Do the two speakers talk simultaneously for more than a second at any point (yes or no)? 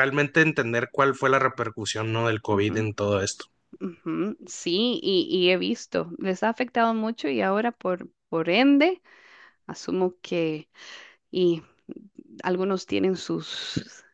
no